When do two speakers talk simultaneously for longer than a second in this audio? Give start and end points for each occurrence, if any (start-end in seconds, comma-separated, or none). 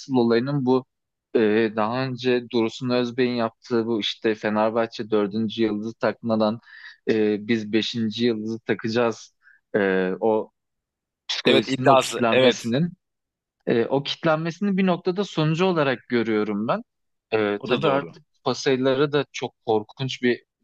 11.5-12.7